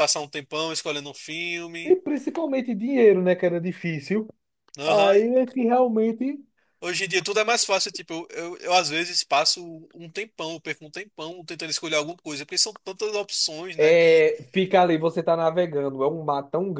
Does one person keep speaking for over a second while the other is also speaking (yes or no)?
no